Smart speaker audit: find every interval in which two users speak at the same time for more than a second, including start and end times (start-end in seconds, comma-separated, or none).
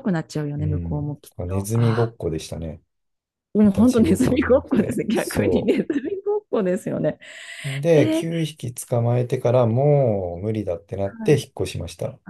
0.6-2.1, 3.6-5.7